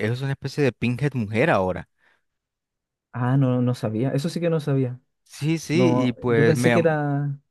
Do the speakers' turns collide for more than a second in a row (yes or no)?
yes